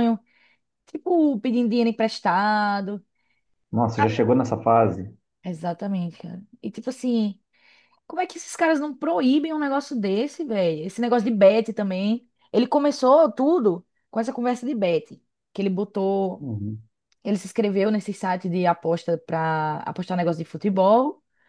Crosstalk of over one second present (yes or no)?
no